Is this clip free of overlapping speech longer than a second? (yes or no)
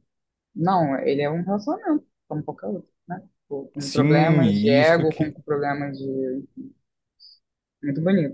no